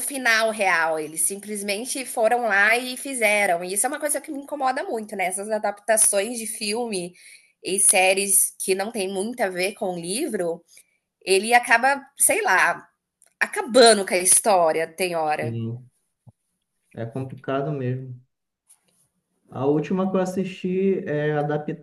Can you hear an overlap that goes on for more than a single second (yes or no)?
no